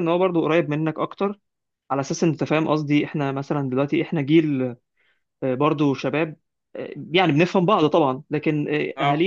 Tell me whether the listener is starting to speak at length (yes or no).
no